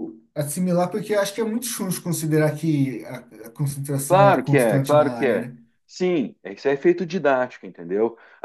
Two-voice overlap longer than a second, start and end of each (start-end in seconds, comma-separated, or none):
4.1-5.5